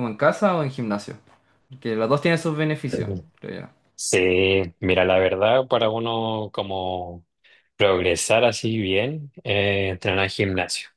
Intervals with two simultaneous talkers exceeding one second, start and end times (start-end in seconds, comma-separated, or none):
none